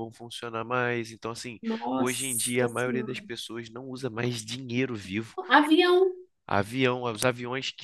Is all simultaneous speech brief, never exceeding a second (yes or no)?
no